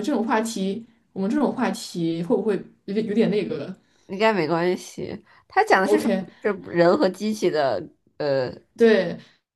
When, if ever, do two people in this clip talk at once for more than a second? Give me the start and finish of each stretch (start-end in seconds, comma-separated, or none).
none